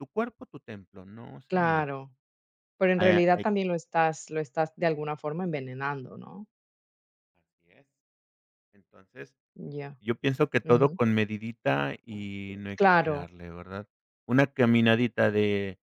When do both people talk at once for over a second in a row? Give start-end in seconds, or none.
none